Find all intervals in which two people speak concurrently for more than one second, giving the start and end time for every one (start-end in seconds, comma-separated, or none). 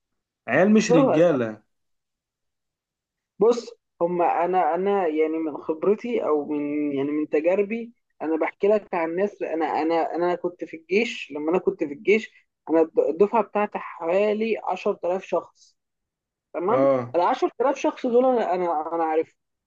none